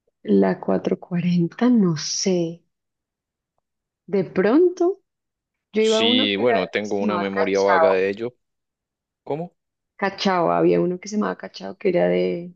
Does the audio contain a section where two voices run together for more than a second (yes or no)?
yes